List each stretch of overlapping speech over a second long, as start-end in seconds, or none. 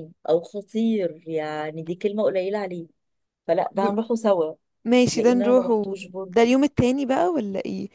5.1-6.5